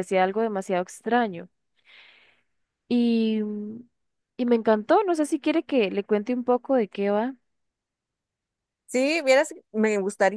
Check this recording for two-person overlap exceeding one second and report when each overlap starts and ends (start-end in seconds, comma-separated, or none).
none